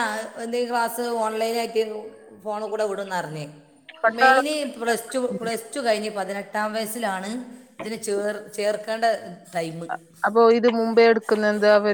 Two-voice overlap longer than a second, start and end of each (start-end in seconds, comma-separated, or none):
none